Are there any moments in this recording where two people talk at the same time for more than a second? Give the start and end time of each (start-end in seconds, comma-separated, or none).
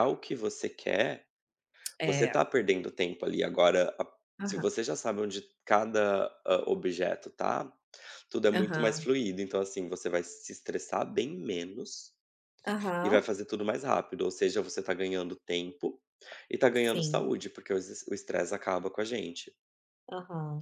none